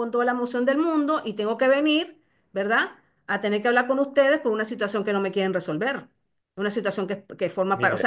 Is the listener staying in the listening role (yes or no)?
yes